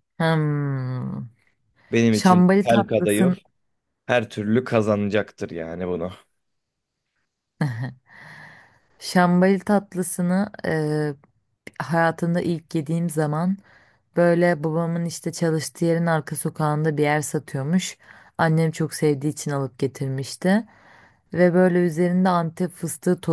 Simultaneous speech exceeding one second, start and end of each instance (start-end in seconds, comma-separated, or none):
2.1-3.4